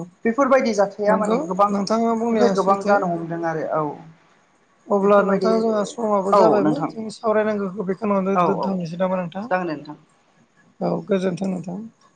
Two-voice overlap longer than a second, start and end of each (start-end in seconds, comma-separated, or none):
1.1-2.9